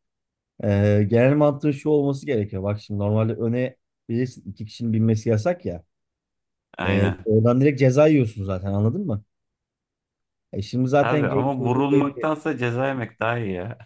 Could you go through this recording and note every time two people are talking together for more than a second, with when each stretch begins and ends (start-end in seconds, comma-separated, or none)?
11.0-12.3